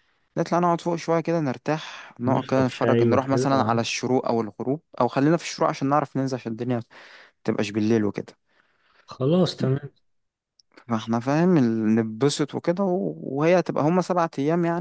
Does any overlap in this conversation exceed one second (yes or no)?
yes